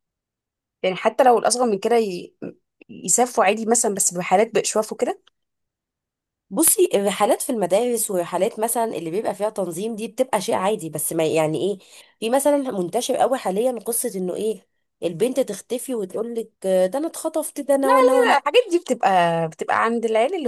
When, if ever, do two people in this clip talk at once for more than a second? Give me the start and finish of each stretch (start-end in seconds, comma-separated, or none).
none